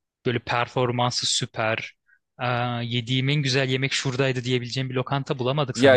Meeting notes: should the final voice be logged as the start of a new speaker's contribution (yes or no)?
yes